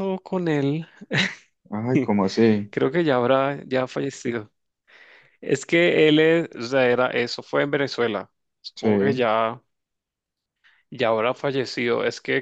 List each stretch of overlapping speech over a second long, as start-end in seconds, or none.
none